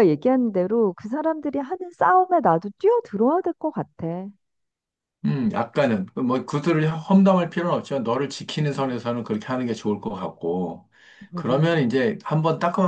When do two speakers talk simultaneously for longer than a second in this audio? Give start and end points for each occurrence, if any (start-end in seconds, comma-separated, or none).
none